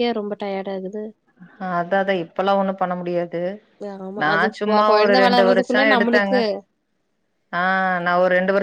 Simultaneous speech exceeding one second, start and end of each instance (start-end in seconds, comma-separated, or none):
4.2-6.3